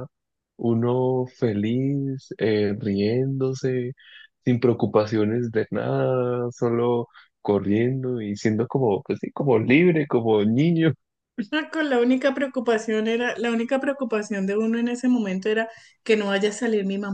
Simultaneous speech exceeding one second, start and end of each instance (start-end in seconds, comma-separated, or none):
none